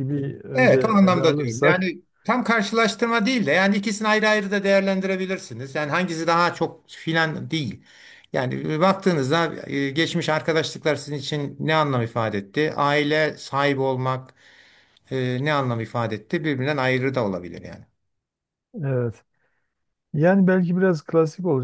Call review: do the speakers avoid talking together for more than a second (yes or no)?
no